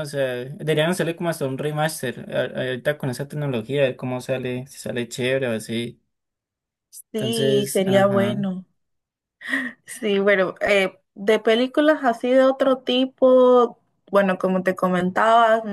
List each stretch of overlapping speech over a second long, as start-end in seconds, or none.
7.2-8.5